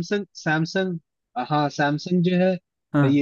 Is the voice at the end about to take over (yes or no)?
no